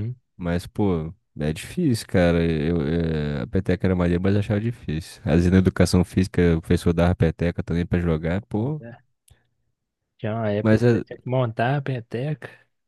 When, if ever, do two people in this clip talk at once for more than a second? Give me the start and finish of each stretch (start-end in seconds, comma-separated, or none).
none